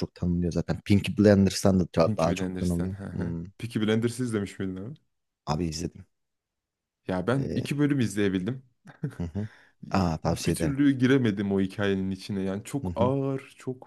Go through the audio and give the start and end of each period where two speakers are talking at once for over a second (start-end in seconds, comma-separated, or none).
2.0-3.4